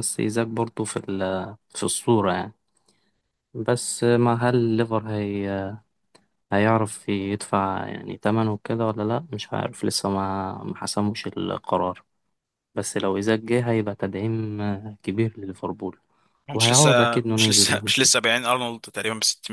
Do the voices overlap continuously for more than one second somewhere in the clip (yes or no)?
yes